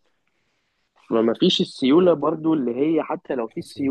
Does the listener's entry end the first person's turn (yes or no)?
no